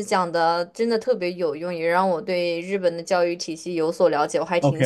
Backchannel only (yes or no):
no